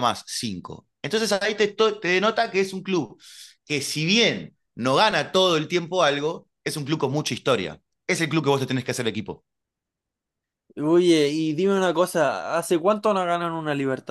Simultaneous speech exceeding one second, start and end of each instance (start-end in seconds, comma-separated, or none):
none